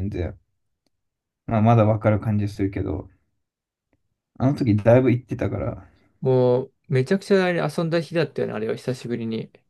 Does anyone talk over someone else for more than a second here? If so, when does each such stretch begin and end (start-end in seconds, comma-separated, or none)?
none